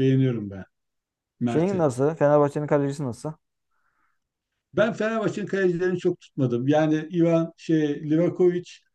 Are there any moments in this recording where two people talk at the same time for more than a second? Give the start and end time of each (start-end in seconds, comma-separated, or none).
none